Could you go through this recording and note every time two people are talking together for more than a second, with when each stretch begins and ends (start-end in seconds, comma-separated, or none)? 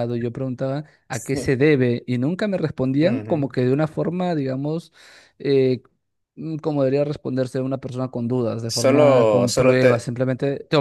8.7-10.1